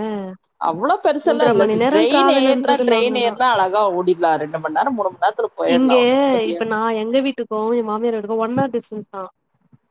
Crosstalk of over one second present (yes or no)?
yes